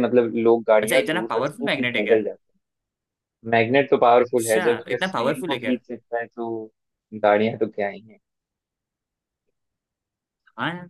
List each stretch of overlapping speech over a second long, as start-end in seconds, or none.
0.8-2.2, 4.2-5.7